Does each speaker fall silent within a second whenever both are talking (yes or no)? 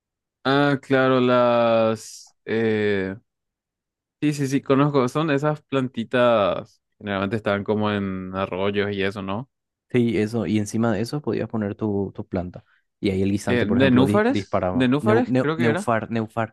no